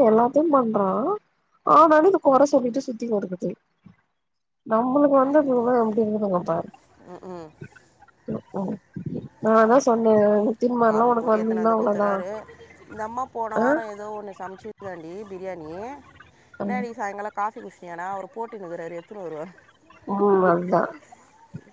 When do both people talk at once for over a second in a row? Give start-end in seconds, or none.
10.9-12.1